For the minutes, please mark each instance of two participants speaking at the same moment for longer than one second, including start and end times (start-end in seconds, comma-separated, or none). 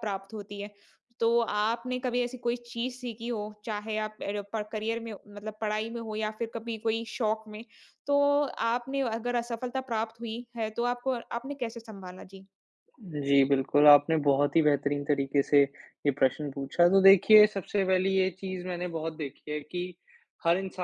none